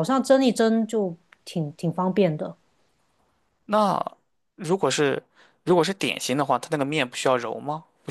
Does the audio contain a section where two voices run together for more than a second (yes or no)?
no